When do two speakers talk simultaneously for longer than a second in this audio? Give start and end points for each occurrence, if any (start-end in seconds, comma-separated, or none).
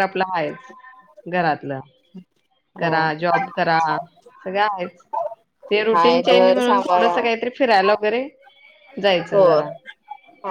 5.9-7.2